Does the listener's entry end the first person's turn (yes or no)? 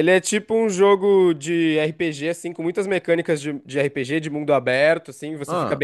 no